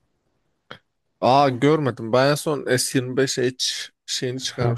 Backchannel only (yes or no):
no